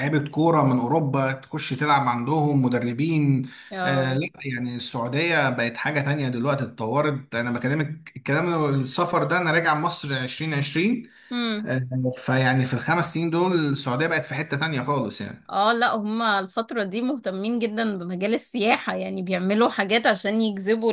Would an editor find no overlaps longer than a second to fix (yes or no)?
yes